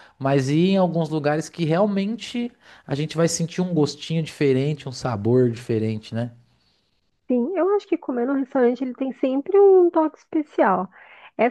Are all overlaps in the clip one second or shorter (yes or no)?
yes